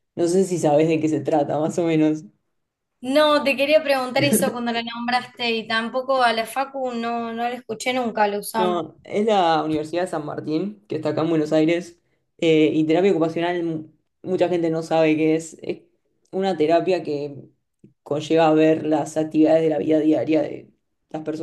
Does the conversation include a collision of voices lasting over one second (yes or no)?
no